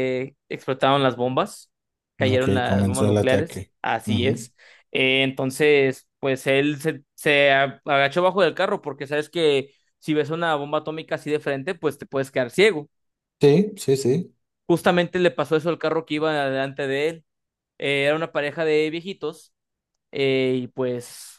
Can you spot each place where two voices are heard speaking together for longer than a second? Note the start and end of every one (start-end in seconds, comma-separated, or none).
2.3-4.5